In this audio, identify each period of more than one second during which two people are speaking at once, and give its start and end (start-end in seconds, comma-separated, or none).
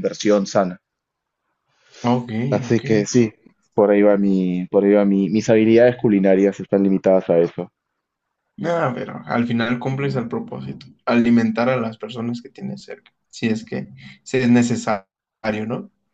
none